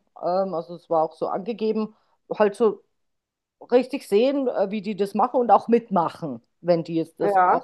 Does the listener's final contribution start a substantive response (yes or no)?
no